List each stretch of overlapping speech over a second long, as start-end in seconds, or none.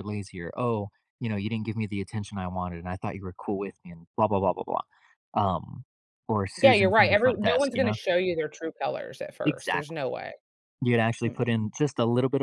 6.6-8.0